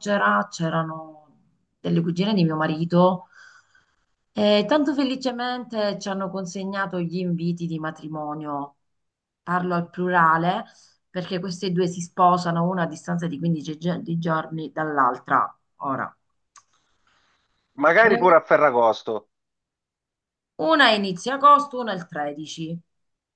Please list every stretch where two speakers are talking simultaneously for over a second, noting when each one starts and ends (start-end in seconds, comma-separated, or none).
none